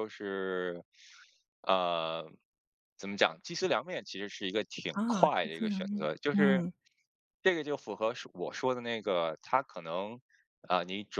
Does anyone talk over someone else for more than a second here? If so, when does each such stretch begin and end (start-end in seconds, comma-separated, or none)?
4.9-6.6